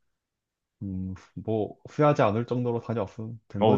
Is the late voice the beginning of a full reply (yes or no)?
yes